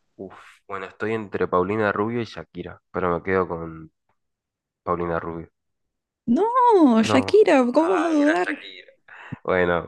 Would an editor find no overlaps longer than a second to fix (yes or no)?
no